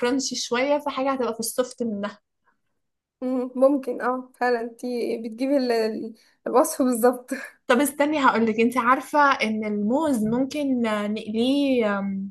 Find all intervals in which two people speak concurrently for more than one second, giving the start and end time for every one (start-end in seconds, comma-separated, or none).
none